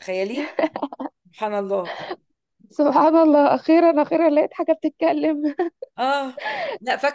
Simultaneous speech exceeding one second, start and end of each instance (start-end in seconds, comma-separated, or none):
none